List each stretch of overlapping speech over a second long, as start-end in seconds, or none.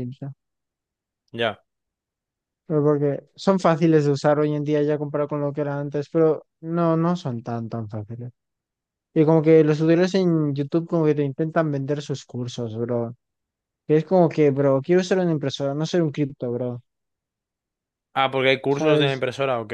none